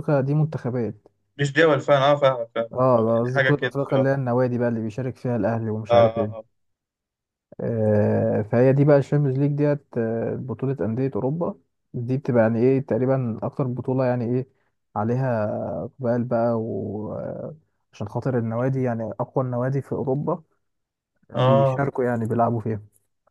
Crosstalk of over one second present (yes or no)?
yes